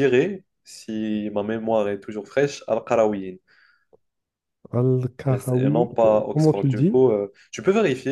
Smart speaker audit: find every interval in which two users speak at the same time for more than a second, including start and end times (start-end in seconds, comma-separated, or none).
5.3-7.0